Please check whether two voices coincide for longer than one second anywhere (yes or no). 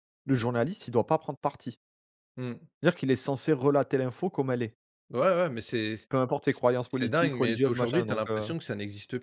yes